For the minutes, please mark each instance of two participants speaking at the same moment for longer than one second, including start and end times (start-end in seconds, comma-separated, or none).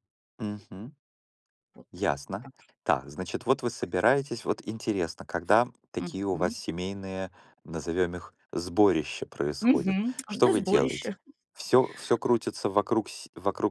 9.6-11.1